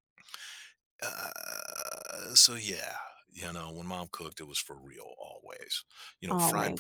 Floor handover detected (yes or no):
no